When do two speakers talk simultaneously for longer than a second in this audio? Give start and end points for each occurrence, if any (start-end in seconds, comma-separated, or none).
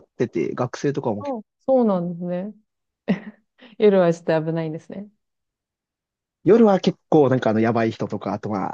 none